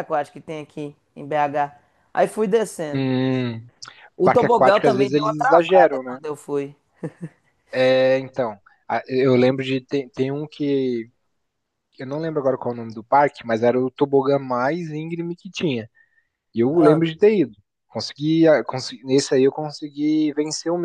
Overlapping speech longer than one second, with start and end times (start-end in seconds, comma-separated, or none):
4.2-6.2